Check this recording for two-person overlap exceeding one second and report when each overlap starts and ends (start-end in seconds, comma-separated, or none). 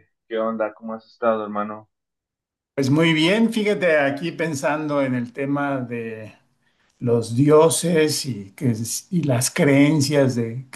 none